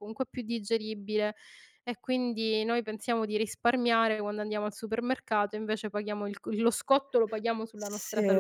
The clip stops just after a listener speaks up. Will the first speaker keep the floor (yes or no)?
no